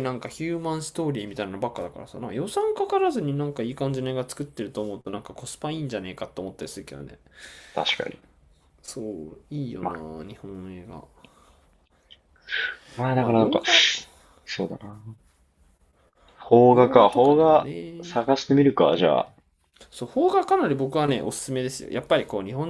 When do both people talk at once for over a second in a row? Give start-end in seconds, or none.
16.7-18.2